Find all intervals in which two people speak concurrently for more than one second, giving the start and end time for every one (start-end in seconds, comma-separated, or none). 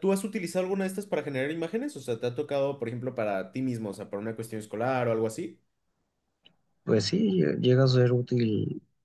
none